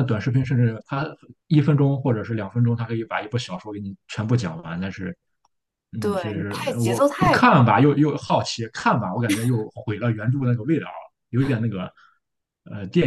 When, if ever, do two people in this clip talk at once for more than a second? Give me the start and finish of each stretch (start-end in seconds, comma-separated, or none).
6.0-7.7